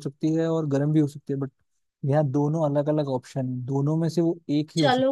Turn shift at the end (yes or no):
yes